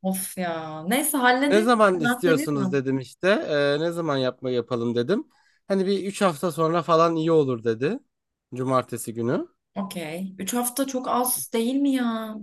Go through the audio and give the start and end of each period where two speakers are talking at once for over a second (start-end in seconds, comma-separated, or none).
1.4-2.8